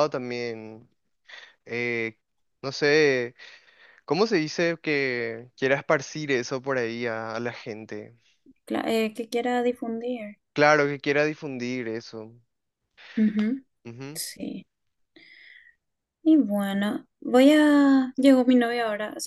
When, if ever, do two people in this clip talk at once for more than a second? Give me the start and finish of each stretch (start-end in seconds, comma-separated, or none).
none